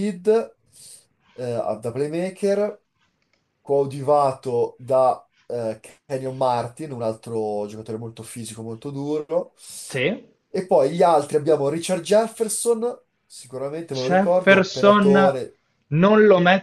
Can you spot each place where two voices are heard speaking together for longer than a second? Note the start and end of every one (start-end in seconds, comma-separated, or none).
13.9-15.4